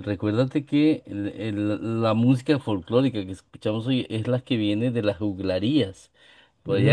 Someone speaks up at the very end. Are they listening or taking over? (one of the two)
listening